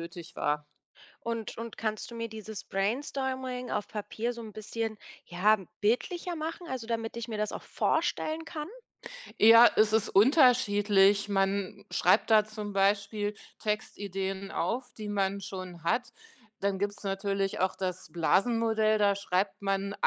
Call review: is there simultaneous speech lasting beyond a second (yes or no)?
no